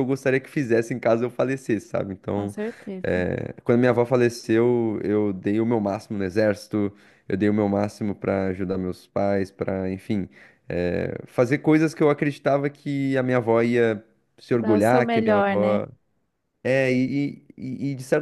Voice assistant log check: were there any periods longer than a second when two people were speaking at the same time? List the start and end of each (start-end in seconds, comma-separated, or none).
14.5-15.8